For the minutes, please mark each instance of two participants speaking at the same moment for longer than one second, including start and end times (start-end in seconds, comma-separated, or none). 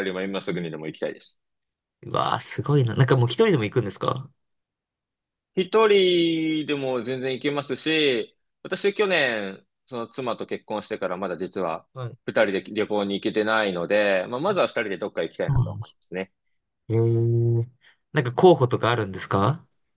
none